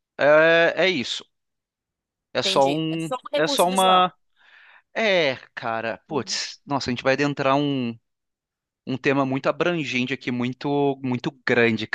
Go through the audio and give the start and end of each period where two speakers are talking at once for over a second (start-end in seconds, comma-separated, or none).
2.4-4.1